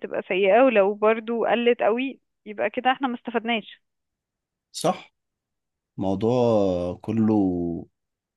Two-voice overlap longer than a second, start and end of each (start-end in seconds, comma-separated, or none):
none